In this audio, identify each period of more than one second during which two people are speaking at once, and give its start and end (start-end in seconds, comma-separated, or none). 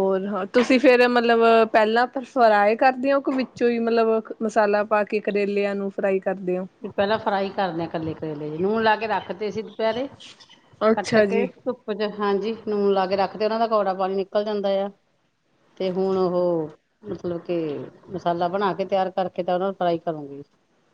none